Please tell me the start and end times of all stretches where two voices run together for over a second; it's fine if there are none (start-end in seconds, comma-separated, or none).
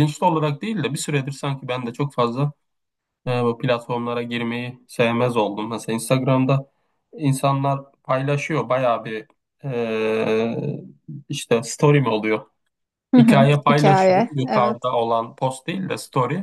13.2-14.8